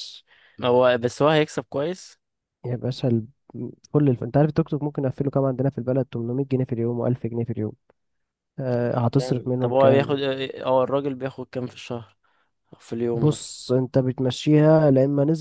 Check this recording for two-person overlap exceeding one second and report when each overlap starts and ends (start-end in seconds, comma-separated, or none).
8.7-10.1